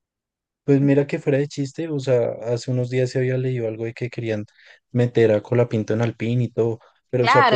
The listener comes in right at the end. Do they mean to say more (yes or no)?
yes